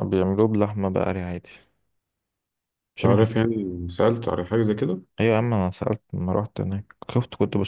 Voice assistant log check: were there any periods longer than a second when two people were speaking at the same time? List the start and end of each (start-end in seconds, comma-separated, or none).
none